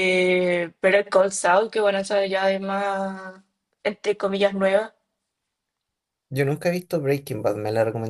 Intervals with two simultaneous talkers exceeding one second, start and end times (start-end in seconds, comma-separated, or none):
none